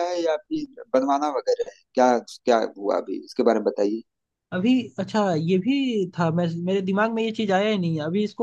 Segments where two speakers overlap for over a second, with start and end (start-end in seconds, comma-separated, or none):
none